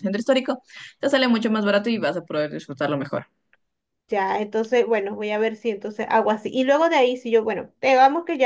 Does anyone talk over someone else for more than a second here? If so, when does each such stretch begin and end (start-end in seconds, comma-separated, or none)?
none